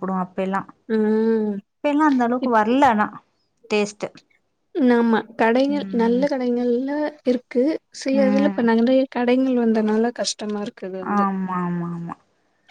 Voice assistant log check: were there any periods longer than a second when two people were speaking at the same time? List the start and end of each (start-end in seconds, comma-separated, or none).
none